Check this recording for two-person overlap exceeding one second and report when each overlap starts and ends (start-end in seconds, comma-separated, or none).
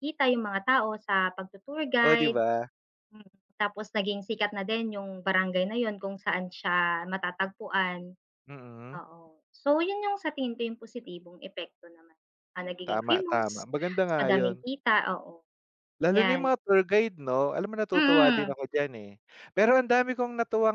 12.9-14.6